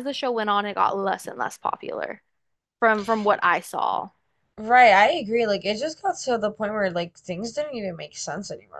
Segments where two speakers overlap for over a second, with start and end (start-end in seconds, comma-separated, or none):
none